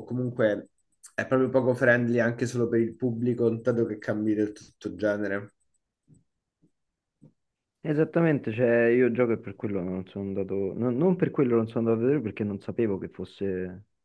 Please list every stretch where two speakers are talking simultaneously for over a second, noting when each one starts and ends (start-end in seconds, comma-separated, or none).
none